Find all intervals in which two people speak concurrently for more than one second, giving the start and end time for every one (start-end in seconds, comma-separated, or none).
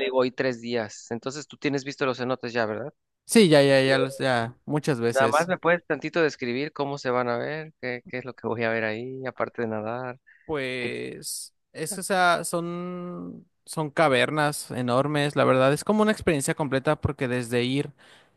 none